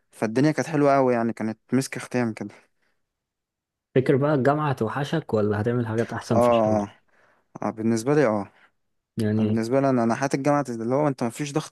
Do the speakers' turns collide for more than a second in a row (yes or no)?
no